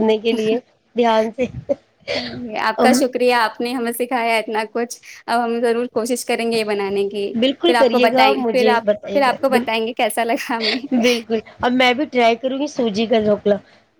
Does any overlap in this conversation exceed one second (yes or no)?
yes